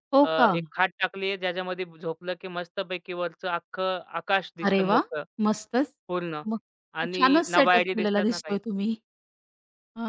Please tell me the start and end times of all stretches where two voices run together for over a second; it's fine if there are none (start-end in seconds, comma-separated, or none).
7.0-8.6